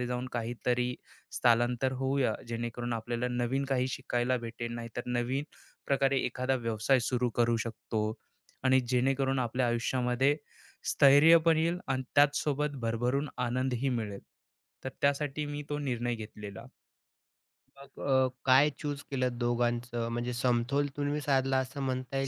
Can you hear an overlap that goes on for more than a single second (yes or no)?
no